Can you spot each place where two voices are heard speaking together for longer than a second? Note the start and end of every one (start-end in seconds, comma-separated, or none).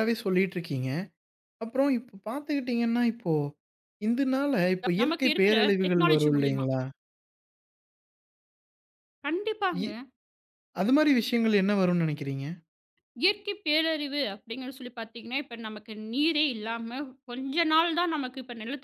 5.0-6.7